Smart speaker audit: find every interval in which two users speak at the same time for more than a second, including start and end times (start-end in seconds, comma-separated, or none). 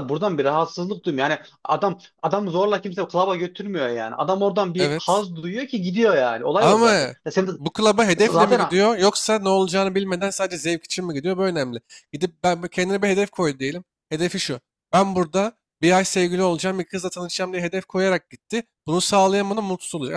none